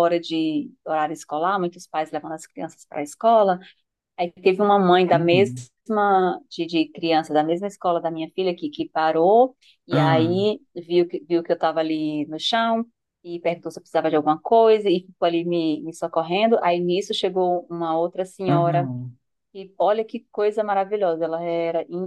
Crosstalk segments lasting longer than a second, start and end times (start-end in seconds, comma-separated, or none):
none